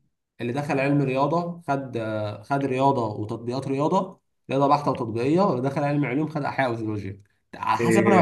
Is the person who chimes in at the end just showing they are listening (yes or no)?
no